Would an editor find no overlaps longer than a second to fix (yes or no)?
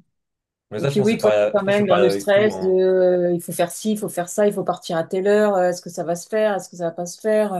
no